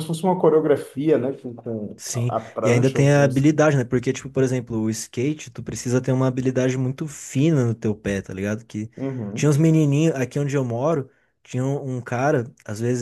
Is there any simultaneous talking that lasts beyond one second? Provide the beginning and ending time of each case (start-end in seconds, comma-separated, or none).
2.0-3.5